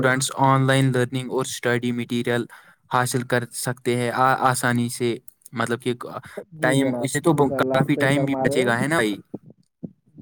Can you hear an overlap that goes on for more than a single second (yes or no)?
yes